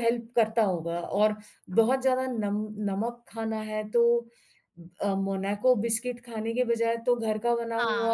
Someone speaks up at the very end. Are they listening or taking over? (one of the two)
listening